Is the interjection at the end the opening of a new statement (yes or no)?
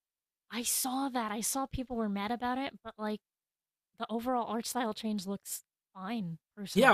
yes